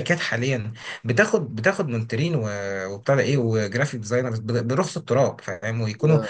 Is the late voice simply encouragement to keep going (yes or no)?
yes